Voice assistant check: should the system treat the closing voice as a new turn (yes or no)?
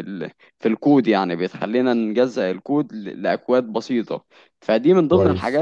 no